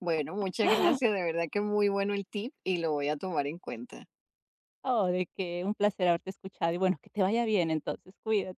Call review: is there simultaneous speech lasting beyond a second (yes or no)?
no